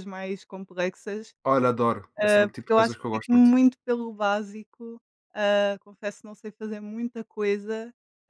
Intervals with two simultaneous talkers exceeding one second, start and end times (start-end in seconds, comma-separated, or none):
2.2-3.6